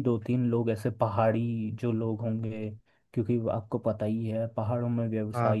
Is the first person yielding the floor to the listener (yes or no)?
no